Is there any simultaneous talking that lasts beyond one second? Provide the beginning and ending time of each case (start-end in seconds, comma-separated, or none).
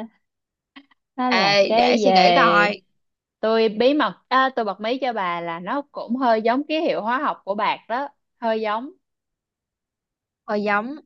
1.3-2.7